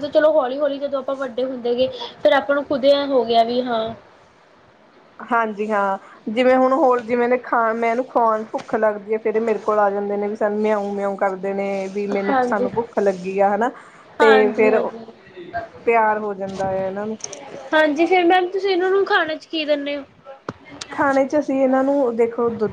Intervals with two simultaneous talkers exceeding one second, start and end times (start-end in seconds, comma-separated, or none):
none